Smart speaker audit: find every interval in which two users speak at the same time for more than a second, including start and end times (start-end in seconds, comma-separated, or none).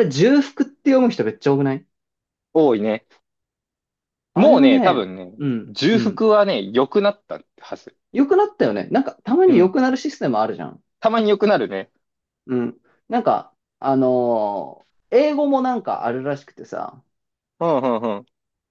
4.3-6.2